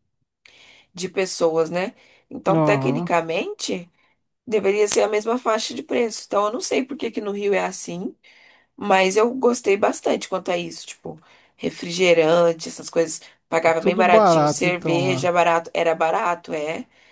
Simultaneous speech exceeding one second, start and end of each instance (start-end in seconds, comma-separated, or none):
13.6-15.3